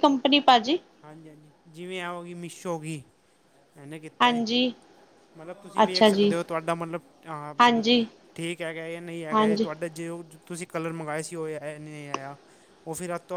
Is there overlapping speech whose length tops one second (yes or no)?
no